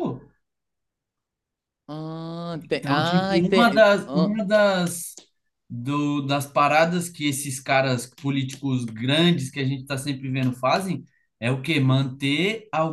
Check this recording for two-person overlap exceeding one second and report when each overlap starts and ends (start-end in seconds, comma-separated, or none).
2.7-4.4